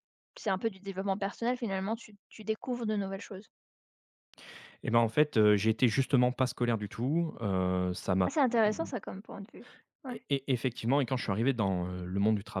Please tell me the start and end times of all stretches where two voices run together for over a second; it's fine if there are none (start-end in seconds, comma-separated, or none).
none